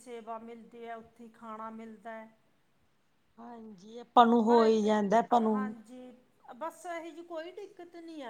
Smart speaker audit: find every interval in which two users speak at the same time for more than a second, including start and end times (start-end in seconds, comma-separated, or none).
none